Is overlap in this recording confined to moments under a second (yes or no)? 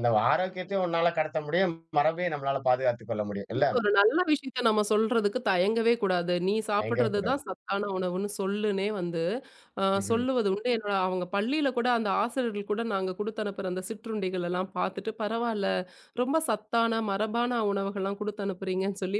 yes